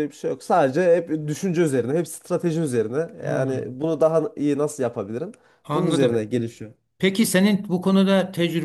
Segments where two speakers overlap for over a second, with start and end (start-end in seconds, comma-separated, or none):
none